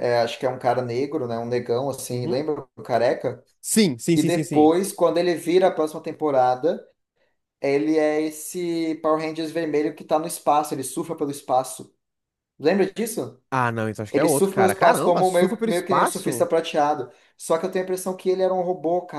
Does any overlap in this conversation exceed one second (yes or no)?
yes